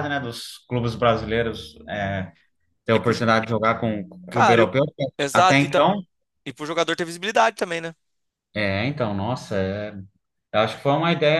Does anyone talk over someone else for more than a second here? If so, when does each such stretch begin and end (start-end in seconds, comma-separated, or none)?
none